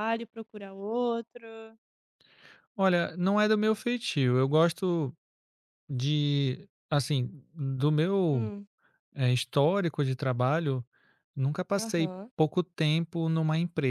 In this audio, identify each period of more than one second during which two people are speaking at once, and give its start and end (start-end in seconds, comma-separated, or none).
none